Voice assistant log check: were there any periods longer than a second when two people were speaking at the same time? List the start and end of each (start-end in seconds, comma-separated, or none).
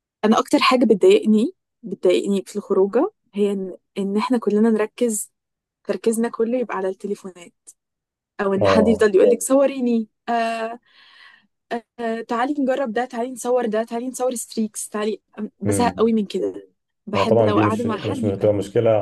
17.1-18.5